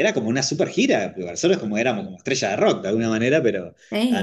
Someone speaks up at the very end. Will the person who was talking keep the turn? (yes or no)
no